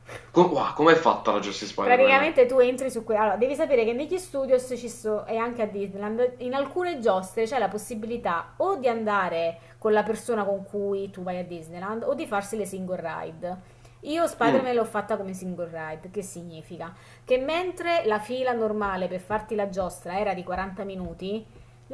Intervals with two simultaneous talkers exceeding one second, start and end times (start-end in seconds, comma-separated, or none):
none